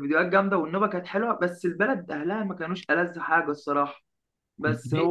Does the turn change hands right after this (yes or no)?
no